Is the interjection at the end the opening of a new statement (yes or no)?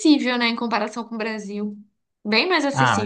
yes